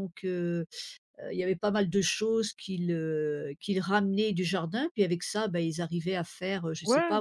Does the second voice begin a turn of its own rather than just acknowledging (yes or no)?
no